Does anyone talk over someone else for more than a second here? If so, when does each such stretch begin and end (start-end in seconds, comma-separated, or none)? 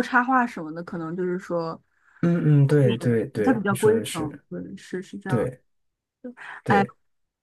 2.8-4.4